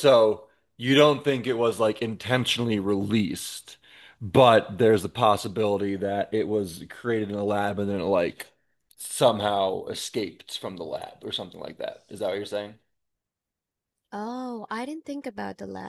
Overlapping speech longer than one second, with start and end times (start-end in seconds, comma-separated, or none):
none